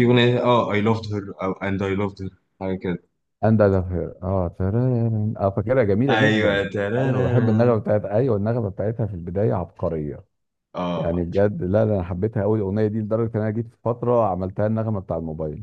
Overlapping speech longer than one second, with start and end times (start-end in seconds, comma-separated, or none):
6.1-7.8